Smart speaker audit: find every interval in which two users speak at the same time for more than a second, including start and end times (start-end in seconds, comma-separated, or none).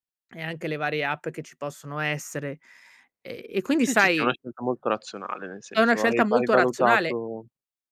5.7-7.2